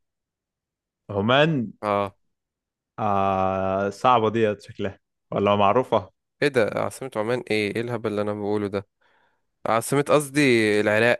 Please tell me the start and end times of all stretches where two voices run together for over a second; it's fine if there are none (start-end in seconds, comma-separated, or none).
none